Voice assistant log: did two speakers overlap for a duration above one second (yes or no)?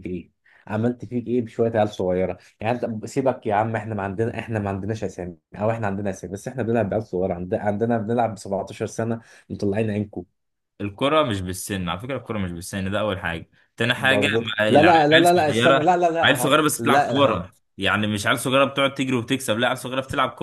yes